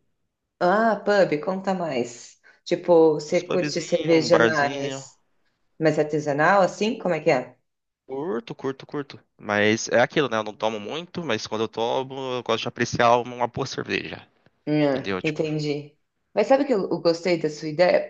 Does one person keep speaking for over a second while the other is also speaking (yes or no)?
yes